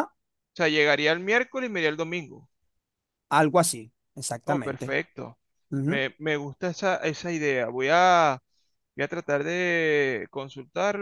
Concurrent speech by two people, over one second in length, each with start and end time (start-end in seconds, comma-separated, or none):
none